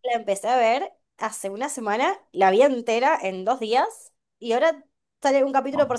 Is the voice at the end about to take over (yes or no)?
no